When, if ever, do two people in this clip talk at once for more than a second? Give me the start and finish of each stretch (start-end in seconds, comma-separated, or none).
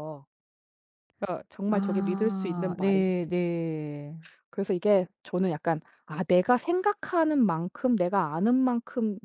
1.7-3.3